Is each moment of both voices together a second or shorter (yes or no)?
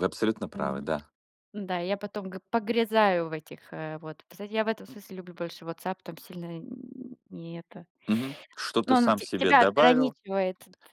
no